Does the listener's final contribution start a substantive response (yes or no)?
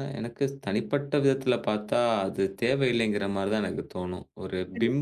no